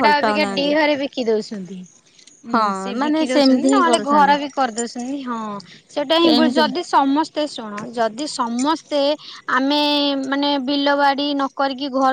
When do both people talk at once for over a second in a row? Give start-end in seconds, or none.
2.5-4.3